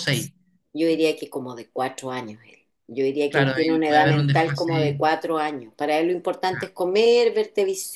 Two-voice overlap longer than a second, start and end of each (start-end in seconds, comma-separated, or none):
3.3-5.0